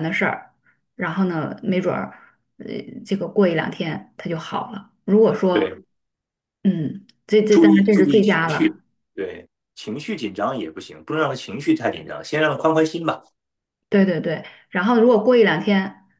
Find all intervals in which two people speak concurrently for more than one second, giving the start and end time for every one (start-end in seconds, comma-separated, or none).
7.5-8.8